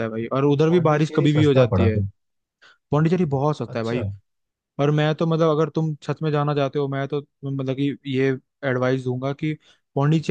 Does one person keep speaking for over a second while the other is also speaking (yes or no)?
yes